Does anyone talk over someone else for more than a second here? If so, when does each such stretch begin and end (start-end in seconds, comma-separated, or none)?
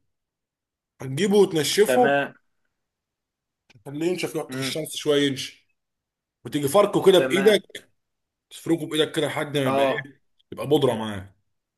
none